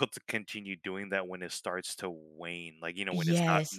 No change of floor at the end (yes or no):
yes